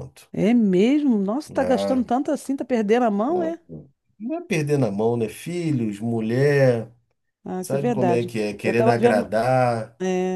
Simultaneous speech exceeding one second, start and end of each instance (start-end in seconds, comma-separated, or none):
7.6-9.3